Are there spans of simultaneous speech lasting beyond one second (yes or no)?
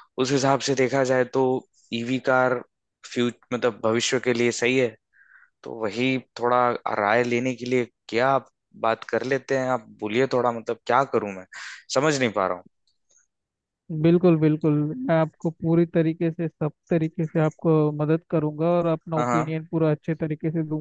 no